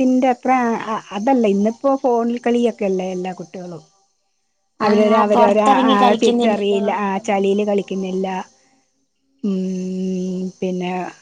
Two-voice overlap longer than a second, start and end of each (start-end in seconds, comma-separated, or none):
4.9-6.8